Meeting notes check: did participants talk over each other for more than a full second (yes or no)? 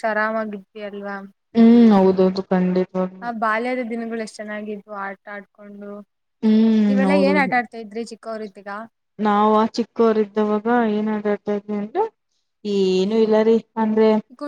no